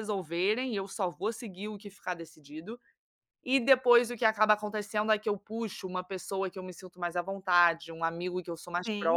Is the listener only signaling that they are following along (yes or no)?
yes